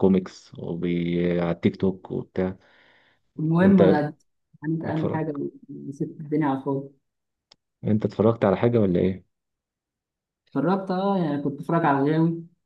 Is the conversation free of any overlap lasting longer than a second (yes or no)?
yes